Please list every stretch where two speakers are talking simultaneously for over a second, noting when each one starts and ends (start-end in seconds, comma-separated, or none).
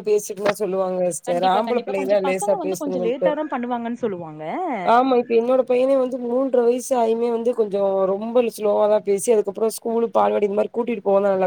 1.3-3.3